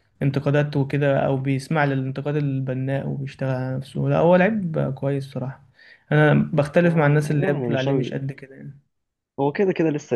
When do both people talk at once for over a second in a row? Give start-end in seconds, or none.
6.8-8.2